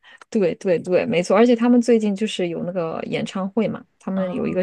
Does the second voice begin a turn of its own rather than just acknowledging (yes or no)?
no